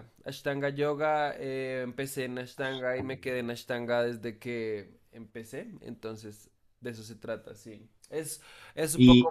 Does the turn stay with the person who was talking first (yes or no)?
yes